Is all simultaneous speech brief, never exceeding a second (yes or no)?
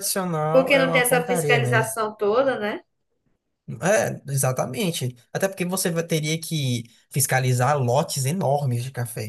no